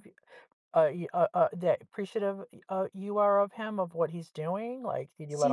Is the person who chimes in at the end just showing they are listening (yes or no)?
no